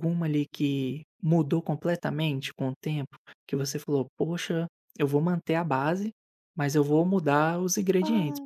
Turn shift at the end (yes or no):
no